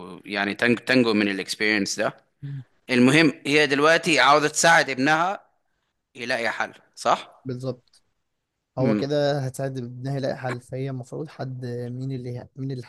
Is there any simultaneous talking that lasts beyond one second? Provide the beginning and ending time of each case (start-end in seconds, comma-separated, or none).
none